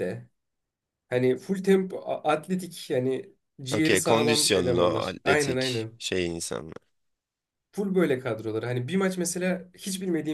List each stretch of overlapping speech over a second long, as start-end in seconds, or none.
3.7-6.0